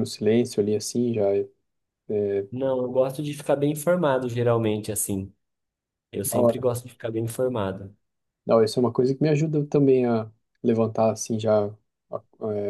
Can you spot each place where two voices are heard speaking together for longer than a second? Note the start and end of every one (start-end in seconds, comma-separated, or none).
none